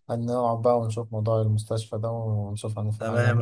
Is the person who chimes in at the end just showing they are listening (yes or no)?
no